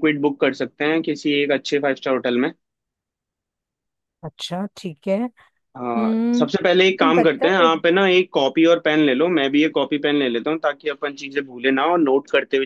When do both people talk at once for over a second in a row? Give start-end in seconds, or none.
5.8-7.7